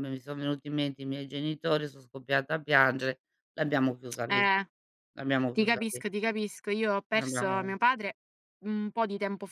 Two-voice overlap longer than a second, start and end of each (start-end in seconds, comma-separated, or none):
none